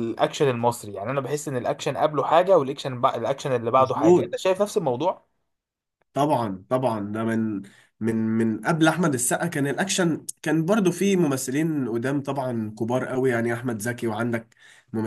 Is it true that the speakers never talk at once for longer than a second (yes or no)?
yes